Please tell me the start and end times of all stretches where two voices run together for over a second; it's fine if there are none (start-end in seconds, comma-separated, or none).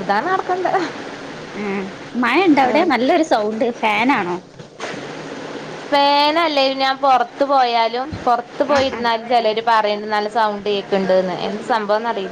none